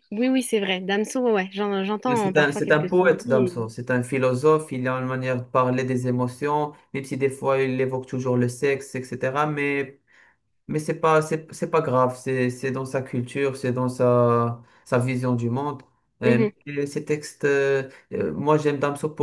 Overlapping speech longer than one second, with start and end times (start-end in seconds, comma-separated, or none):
2.1-3.5